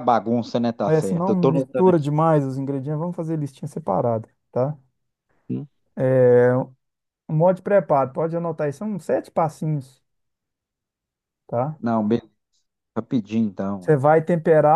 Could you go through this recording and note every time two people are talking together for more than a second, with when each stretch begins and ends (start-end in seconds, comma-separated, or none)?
0.8-2.1